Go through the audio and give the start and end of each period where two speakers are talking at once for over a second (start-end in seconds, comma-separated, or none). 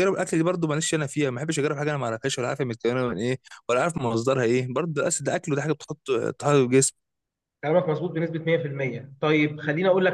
none